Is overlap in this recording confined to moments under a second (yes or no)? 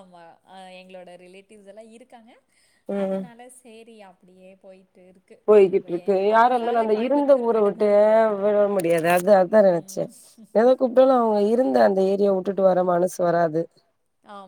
no